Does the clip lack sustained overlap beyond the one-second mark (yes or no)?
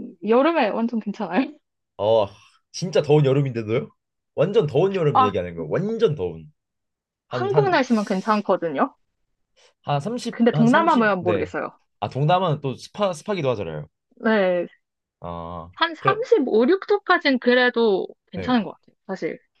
no